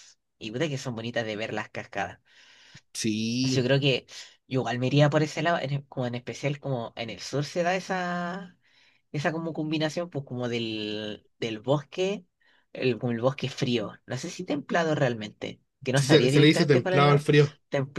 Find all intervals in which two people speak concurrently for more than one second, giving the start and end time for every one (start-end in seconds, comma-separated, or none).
15.9-17.2